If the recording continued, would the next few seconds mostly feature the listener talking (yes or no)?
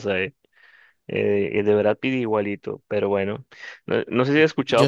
no